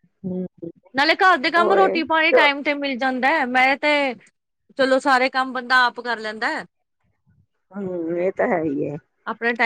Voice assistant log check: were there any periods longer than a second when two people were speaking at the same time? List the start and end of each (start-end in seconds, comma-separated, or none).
none